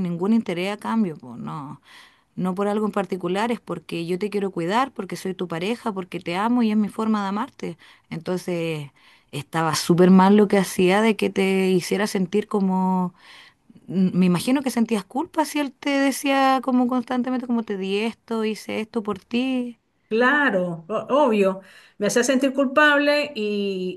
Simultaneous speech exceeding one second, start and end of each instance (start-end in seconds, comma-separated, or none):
none